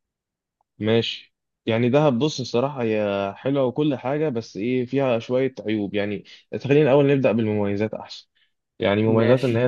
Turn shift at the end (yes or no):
no